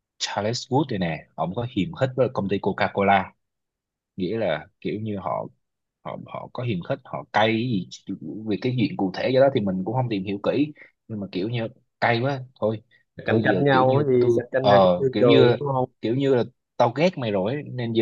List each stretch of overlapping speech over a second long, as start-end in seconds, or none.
13.2-15.6